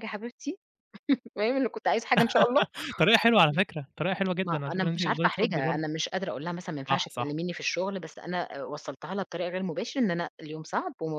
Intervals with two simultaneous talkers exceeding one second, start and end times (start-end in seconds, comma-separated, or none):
4.4-5.8